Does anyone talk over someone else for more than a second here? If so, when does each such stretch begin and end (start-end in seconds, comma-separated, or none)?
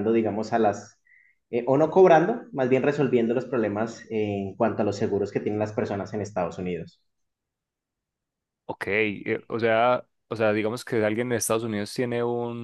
none